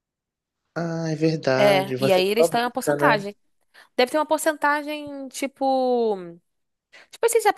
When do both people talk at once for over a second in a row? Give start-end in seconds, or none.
1.6-3.2